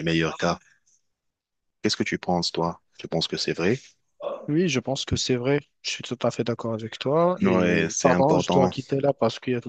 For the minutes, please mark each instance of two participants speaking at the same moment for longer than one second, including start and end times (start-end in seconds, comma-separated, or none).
7.4-8.7